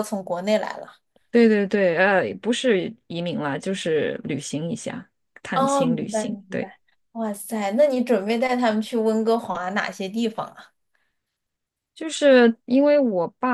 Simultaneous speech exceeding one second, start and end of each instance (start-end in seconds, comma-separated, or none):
5.5-6.7